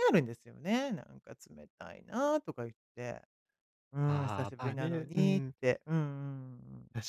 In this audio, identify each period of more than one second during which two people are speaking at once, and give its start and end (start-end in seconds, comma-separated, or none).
4.0-5.5